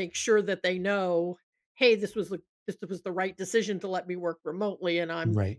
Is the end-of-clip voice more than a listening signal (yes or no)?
no